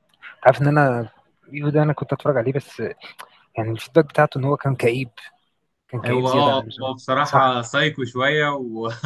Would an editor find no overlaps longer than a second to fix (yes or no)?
no